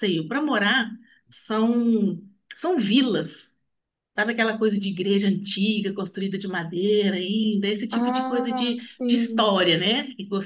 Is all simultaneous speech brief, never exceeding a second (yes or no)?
no